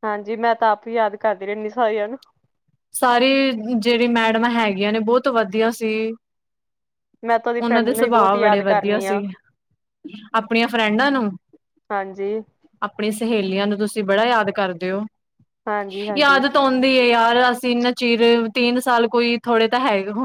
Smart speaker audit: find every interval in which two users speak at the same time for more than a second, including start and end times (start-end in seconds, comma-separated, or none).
7.7-9.2